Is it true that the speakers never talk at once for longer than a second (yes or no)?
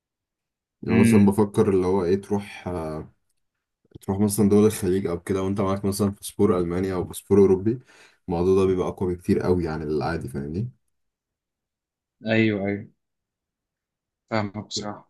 yes